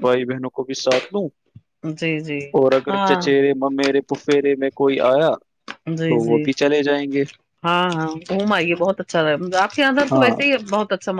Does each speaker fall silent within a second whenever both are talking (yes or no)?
yes